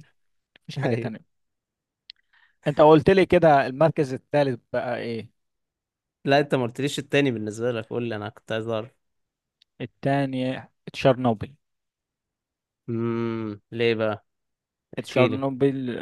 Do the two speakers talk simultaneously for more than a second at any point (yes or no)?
no